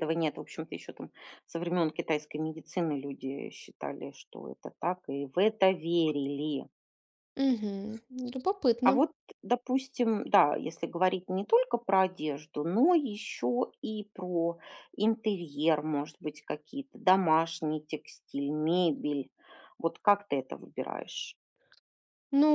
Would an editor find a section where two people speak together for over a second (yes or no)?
no